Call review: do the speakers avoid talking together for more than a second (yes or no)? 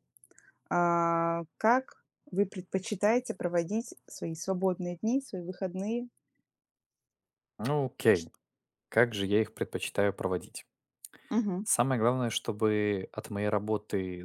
yes